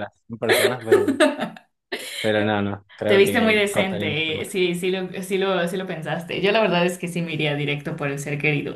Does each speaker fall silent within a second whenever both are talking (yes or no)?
no